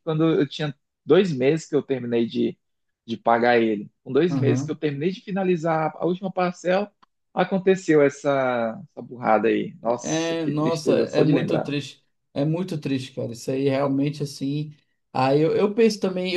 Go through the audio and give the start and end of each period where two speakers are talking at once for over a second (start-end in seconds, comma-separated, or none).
10.0-11.7